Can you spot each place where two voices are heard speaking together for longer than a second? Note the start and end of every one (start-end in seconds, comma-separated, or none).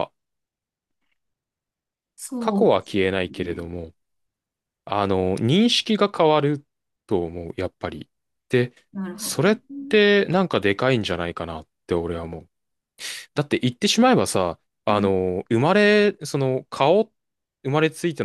2.4-3.6